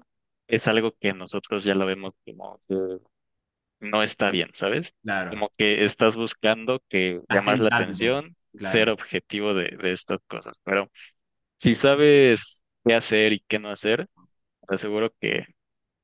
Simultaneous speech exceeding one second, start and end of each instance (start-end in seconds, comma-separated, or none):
7.3-8.9